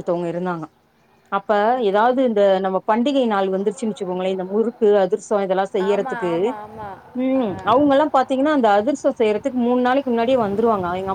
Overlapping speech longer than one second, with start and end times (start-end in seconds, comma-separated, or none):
none